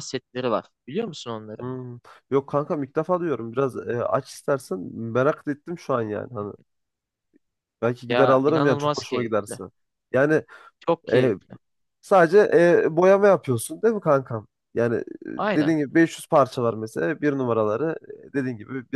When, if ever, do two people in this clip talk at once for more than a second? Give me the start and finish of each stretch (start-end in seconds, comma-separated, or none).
8.1-9.6